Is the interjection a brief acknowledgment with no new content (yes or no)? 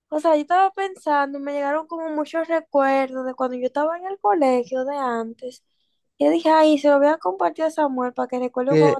no